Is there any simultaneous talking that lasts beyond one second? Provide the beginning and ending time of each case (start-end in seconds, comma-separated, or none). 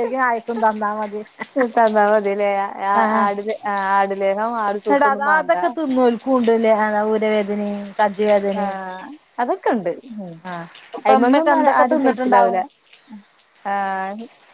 11.1-12.6